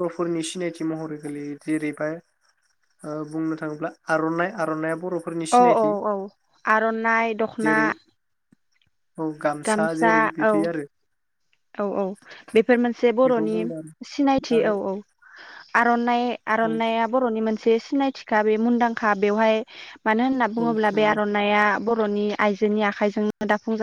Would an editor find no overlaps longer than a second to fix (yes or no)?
yes